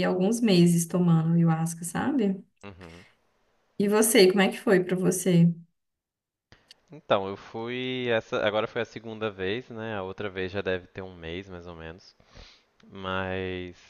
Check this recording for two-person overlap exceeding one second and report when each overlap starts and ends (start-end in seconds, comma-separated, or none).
none